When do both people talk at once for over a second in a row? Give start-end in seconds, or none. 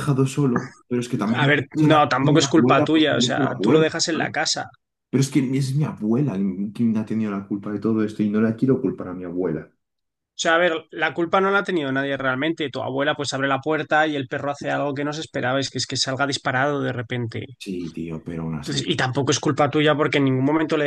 1.3-4.3